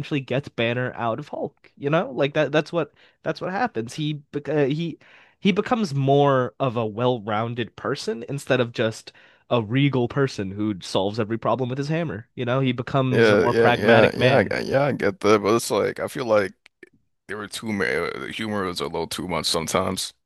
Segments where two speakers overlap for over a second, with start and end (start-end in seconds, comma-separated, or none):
13.1-14.6